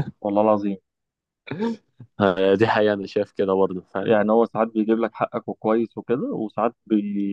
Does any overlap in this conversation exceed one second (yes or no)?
no